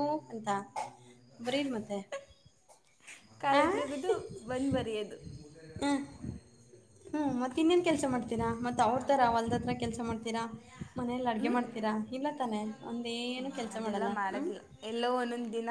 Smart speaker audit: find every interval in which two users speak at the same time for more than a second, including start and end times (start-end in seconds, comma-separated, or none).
none